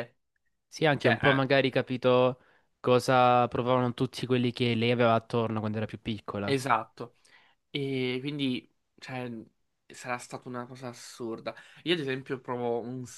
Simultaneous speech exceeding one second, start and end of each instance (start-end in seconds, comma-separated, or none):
none